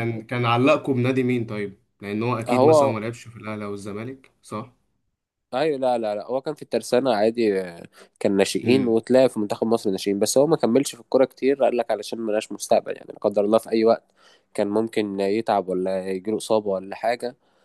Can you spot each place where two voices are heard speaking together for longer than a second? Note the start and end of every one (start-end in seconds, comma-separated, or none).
none